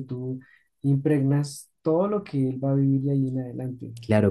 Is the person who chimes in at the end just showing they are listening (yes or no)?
no